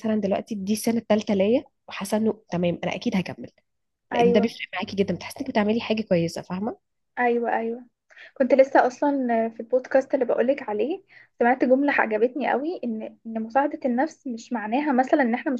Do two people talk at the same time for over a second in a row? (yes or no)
no